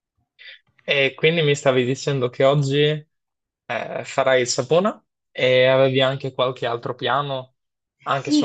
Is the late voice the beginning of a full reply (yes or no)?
yes